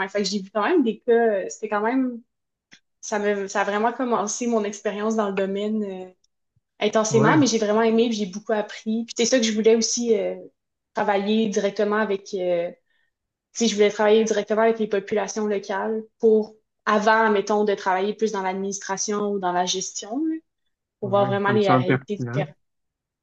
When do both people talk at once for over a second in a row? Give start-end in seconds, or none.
21.0-22.4